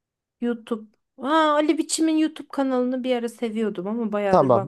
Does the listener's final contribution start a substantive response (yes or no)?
yes